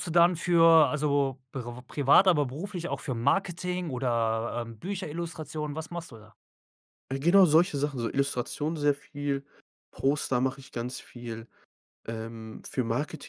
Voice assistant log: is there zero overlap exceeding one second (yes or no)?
yes